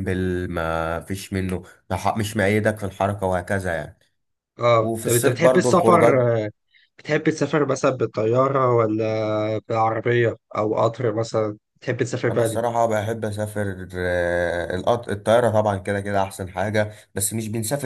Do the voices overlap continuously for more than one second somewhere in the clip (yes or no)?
yes